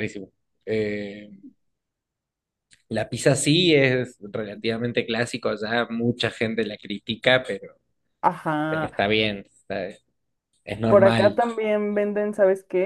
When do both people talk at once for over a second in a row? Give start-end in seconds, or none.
none